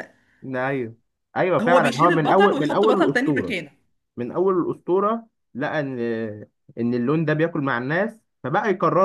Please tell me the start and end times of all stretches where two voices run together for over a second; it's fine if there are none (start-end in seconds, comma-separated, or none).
1.6-3.5